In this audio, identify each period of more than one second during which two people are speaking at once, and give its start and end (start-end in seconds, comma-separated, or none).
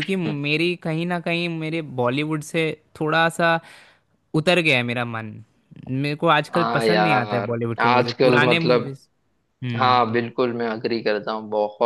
6.5-8.9